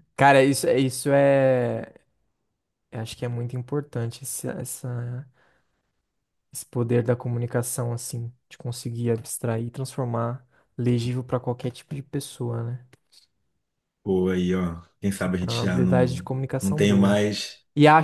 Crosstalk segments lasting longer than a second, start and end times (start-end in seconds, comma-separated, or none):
15.2-17.2